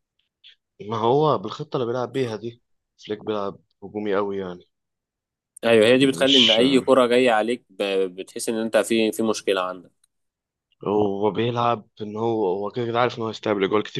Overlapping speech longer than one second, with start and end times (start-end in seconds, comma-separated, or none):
none